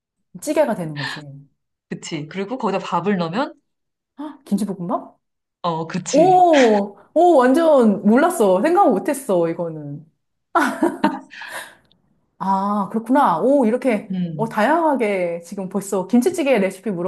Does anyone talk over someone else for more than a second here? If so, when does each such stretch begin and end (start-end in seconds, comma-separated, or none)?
none